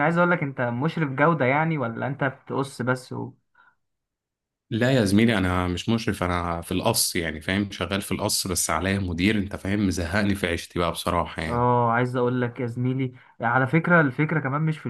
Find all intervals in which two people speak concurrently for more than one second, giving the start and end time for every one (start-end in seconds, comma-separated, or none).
none